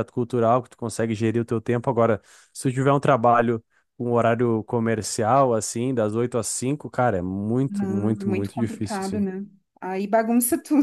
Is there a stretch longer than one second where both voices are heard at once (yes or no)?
yes